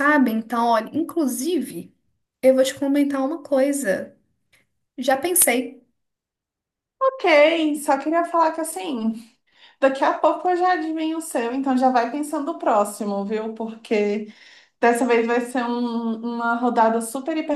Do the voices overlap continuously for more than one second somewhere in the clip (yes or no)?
no